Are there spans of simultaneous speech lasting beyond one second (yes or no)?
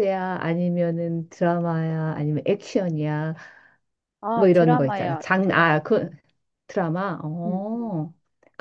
yes